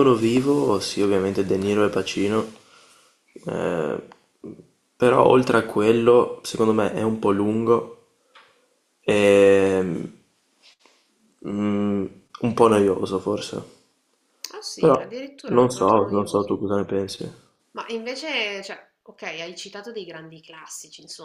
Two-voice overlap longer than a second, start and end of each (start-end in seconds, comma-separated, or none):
14.8-16.6